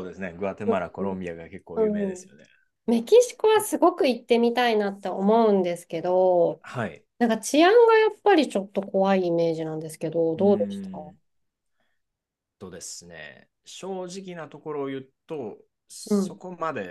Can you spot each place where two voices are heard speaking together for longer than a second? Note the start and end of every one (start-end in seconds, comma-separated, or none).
none